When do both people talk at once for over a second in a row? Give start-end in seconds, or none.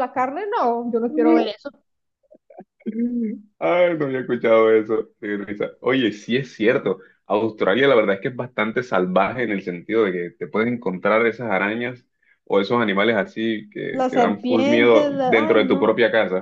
13.9-15.9